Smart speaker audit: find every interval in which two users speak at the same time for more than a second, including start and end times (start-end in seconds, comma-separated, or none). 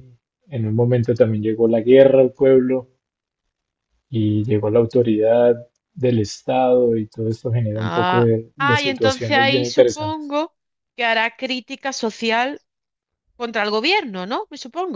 7.8-10.3